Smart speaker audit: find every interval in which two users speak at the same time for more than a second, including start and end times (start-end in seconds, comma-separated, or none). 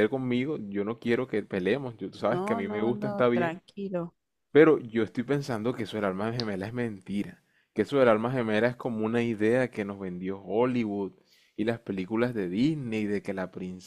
2.2-3.6